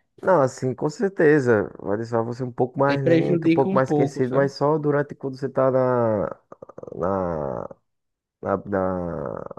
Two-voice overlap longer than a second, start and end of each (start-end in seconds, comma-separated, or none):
2.9-4.5